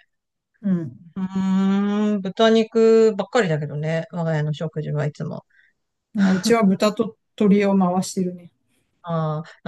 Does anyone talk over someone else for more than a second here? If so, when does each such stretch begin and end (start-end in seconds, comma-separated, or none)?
none